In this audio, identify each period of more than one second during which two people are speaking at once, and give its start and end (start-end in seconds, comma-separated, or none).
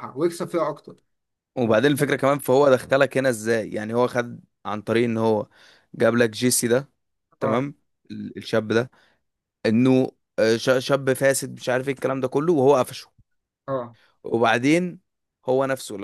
none